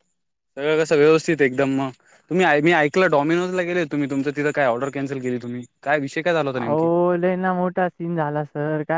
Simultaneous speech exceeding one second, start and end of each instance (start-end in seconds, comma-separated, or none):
none